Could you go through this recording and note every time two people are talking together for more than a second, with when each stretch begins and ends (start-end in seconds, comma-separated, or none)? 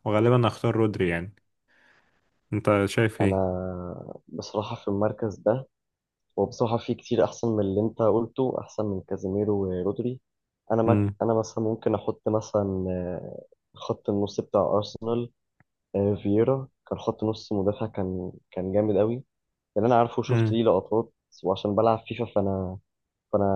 none